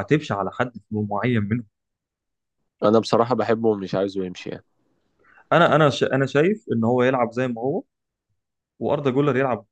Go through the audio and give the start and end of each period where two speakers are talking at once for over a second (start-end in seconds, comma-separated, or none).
none